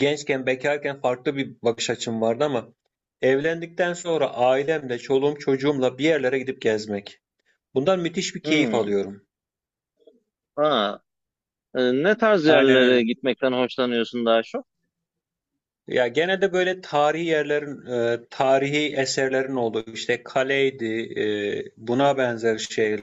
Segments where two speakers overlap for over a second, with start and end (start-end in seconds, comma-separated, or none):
none